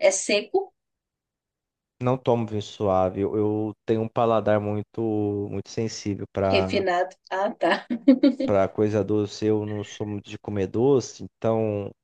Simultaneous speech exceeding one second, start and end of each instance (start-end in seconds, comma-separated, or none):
none